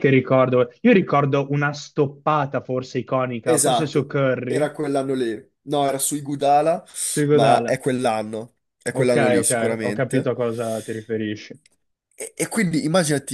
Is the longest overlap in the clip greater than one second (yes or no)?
yes